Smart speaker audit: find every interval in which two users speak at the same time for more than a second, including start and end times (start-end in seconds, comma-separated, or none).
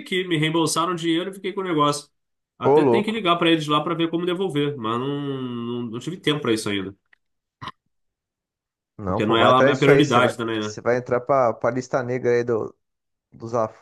9.1-10.8